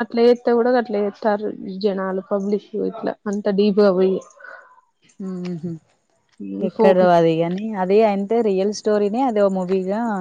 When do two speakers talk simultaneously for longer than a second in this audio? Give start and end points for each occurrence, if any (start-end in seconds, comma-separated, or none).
none